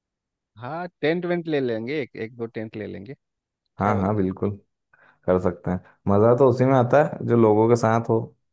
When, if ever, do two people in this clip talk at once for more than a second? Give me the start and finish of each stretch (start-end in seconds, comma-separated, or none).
none